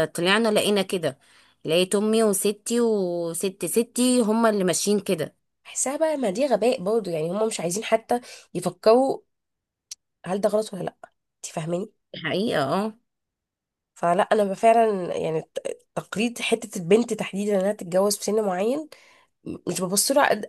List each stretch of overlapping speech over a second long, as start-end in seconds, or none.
none